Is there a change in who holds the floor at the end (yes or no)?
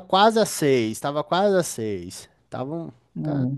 no